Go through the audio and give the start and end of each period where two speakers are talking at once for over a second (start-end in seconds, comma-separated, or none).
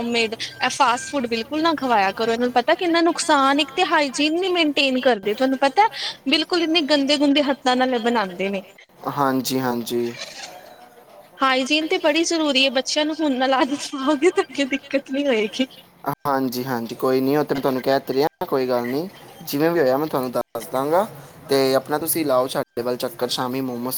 none